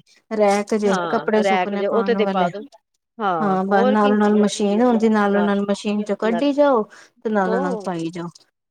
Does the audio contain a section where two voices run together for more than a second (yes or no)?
yes